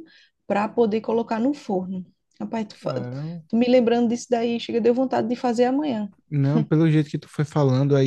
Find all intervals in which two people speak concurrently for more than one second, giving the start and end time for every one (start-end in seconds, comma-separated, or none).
none